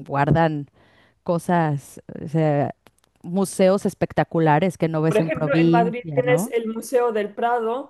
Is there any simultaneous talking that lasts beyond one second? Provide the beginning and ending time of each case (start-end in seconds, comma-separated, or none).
5.0-6.5